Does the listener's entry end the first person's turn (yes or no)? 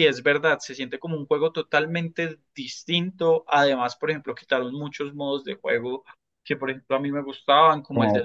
no